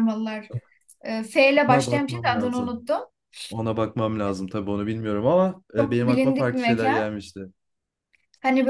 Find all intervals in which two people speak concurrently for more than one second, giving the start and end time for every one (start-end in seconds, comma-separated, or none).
1.6-2.8, 5.8-7.1